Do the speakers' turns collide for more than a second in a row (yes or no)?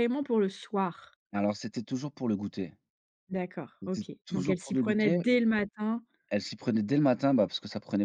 yes